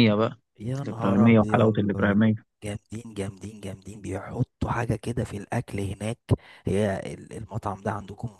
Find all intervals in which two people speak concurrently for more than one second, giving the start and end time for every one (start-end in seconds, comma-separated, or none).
0.8-2.1